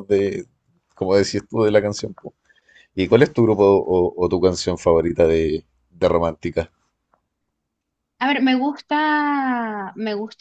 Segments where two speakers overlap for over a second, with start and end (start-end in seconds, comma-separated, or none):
none